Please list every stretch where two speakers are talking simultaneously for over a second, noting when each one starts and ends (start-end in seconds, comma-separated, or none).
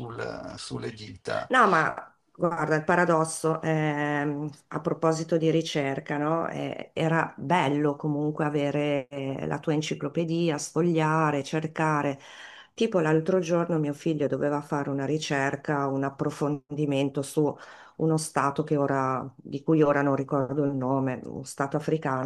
none